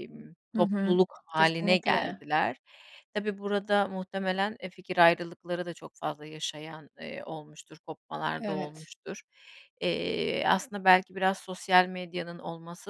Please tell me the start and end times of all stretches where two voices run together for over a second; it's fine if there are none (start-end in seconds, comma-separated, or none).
0.5-2.2